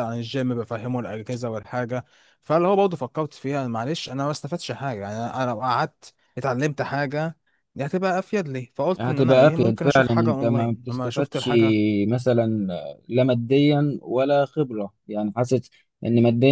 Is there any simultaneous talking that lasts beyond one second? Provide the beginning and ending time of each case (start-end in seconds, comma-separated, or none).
9.0-11.5